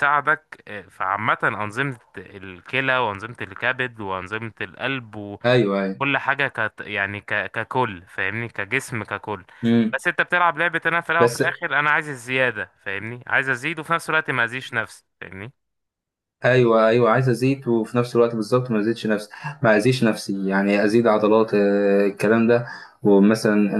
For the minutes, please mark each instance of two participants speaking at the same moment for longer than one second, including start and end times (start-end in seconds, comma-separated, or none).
none